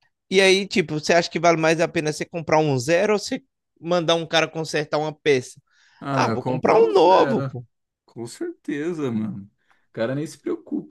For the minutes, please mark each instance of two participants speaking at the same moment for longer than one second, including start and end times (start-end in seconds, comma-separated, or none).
6.1-7.5